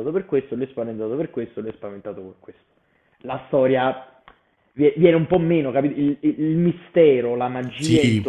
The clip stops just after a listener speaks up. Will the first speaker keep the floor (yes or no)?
yes